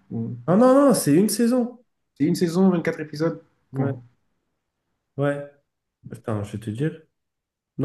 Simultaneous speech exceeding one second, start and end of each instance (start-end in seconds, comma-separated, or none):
none